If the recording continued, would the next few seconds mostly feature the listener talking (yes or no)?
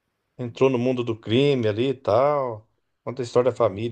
no